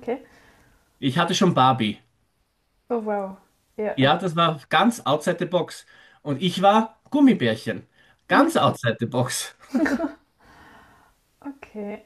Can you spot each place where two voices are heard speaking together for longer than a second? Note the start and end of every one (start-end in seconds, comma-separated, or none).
none